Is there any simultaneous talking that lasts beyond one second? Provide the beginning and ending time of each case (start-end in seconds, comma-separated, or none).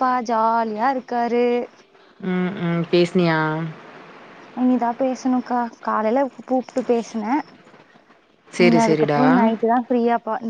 none